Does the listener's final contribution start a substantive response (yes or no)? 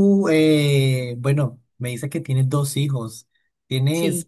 no